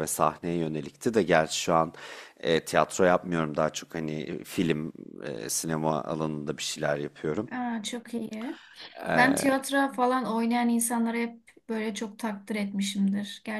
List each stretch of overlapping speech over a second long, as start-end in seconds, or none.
none